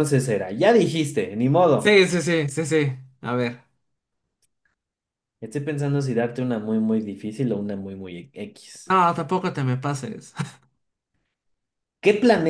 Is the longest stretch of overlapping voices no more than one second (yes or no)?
yes